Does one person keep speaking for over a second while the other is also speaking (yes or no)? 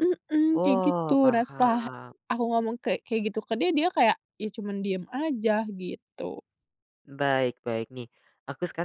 yes